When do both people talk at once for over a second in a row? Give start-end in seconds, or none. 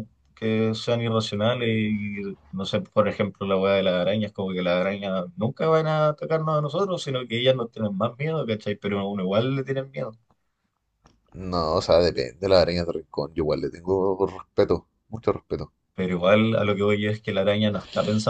none